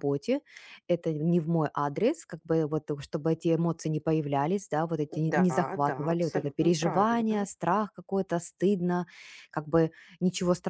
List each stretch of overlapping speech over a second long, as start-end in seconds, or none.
5.3-7.5